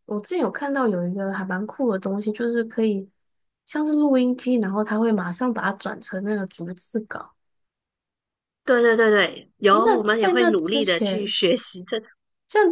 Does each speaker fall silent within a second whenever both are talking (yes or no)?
no